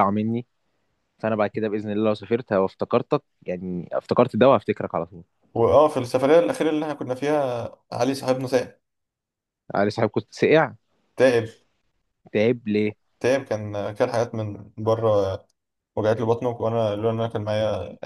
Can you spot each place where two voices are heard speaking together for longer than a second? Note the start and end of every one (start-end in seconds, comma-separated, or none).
none